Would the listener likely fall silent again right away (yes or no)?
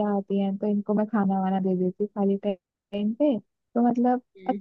yes